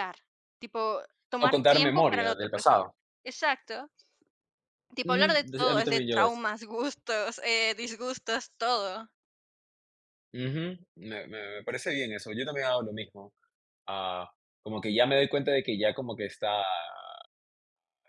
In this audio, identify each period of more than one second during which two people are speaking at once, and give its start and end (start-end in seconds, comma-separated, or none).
1.4-2.8, 5.0-6.4